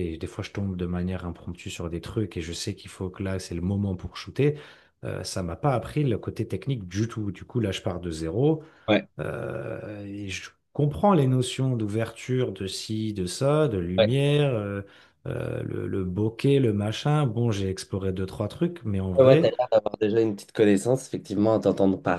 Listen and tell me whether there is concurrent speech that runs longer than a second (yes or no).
no